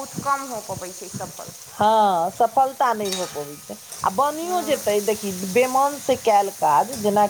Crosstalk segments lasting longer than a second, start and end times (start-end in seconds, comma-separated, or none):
none